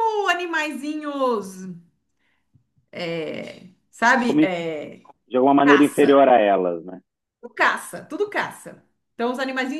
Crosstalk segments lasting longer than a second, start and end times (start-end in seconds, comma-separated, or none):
none